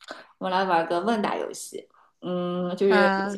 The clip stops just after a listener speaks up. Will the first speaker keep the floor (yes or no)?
yes